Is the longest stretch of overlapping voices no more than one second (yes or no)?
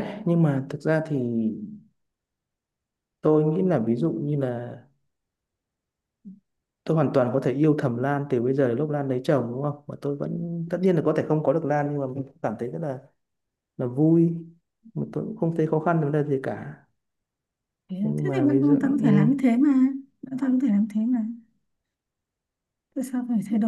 no